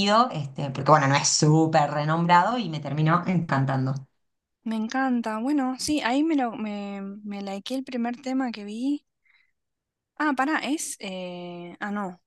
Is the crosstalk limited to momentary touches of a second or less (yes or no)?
yes